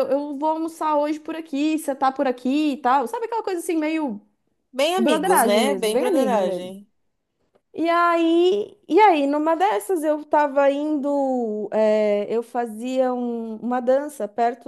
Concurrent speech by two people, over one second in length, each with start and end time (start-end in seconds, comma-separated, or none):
5.0-6.7